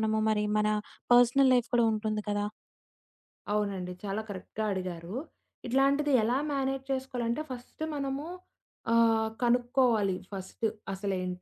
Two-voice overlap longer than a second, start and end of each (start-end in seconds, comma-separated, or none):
none